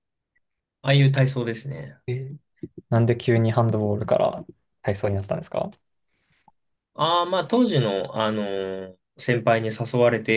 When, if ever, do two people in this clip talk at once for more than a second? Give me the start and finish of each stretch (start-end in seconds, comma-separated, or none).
none